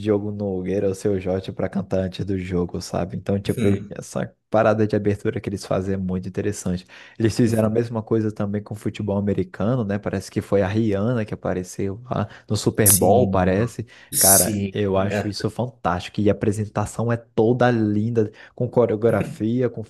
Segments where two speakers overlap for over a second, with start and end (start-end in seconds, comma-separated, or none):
14.1-15.3